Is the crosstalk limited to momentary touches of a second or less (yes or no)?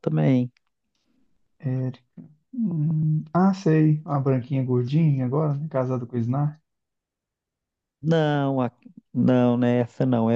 yes